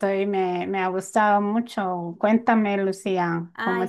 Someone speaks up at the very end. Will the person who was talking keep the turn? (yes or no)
no